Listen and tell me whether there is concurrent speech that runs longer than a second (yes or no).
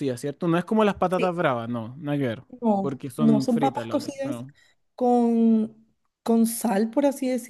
yes